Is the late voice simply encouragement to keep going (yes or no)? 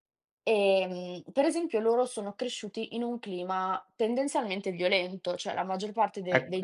no